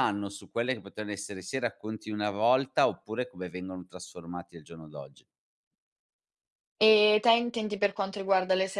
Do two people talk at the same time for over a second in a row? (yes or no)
no